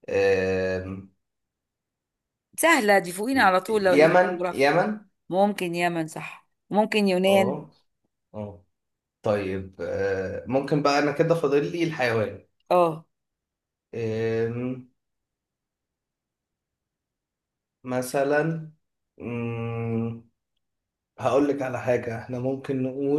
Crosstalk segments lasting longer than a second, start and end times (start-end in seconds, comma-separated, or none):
3.3-4.7